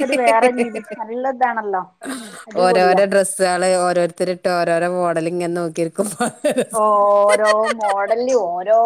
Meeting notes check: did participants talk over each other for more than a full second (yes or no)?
no